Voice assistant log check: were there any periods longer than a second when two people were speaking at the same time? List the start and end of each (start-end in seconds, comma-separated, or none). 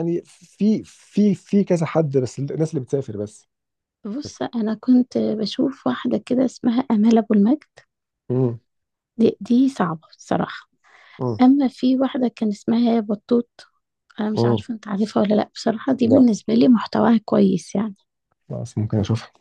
none